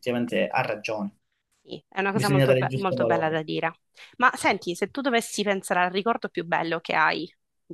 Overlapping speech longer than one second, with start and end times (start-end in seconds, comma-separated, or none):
2.1-3.5